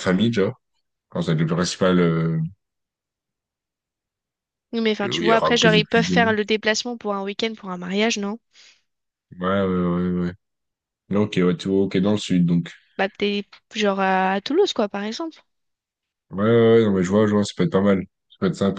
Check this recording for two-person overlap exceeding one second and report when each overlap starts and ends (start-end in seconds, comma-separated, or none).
5.0-6.3